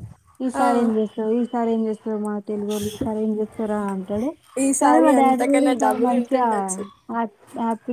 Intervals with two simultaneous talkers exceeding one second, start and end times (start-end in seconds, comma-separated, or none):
4.8-6.5